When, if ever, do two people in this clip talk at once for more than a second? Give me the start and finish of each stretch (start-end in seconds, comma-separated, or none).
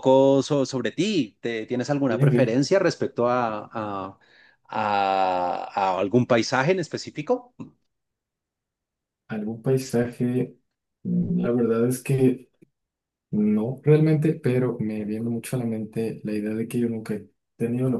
none